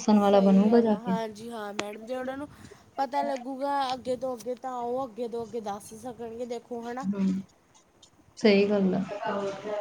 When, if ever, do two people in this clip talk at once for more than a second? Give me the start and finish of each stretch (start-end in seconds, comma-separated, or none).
none